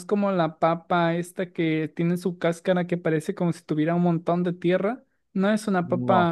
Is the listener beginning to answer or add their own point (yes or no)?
no